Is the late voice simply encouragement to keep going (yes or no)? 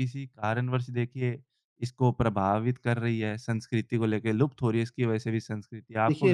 no